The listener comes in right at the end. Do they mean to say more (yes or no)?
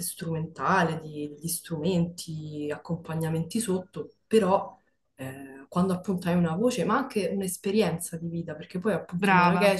no